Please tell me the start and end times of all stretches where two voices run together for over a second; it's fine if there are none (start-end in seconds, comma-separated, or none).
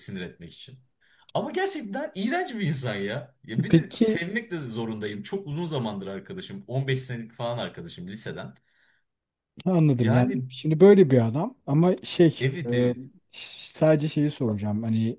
none